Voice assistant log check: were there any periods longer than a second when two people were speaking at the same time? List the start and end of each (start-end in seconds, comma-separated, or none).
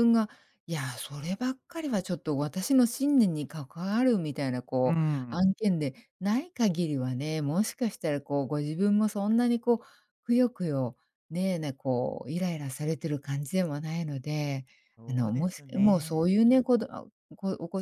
15.1-16.3